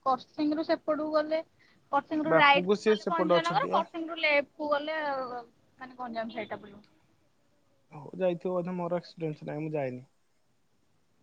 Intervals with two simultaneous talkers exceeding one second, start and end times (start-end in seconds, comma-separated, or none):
2.3-3.8